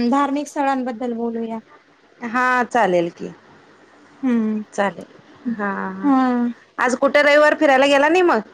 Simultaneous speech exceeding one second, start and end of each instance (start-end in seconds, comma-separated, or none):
none